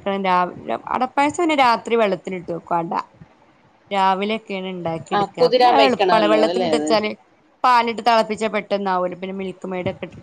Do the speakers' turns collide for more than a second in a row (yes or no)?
yes